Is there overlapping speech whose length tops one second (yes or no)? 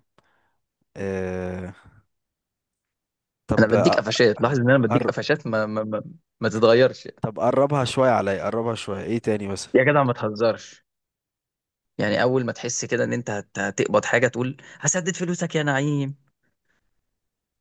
no